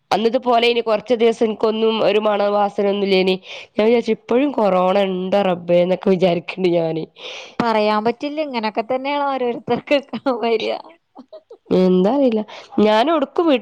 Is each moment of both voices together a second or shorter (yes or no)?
yes